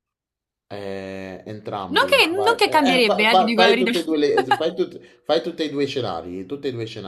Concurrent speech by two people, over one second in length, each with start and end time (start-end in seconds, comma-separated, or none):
1.9-3.9